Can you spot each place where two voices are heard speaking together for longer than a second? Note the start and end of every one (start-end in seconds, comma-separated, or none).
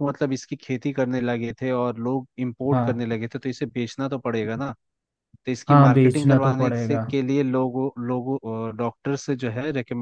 5.7-7.0